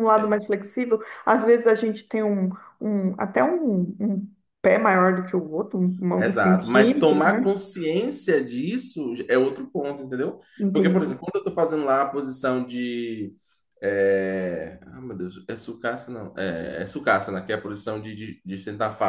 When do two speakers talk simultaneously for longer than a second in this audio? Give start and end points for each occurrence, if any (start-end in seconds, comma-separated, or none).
6.2-7.4